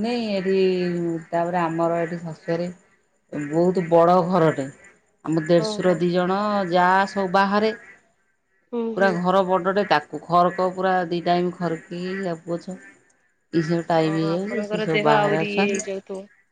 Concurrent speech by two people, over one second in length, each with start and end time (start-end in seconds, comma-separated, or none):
14.0-15.8